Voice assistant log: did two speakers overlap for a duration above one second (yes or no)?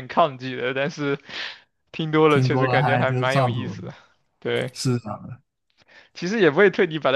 yes